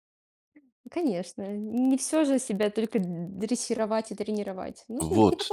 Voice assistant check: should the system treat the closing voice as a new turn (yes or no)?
yes